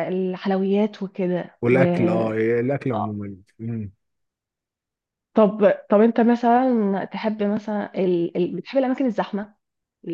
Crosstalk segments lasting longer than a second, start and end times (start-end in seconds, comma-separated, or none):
none